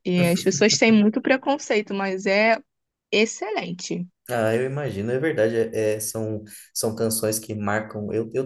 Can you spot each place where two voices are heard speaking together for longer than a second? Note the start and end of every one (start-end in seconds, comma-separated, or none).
none